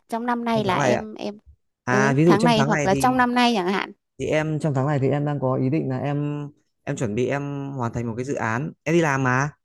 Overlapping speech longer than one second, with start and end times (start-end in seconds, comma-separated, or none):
1.9-3.2